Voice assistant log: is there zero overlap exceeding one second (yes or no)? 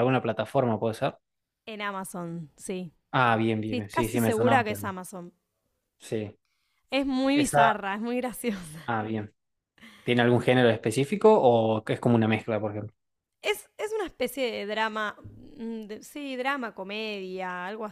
no